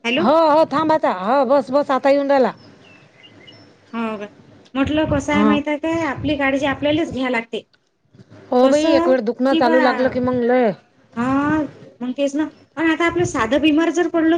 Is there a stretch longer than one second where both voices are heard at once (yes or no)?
no